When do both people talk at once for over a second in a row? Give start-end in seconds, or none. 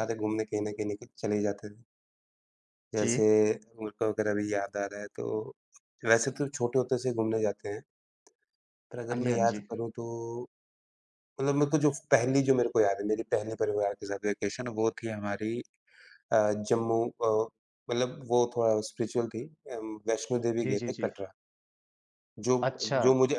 none